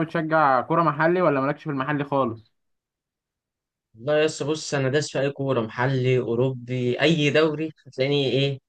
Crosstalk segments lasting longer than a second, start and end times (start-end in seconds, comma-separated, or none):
none